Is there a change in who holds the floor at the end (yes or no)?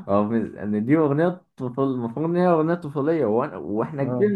no